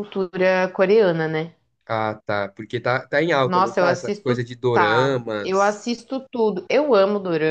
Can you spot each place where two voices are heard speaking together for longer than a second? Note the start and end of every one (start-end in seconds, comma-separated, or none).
3.4-5.8